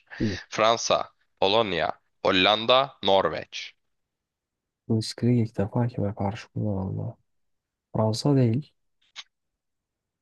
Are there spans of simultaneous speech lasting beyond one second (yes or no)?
no